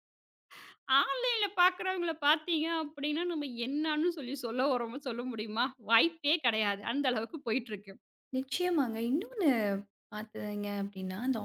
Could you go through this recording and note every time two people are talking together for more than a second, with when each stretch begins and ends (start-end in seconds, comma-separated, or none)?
none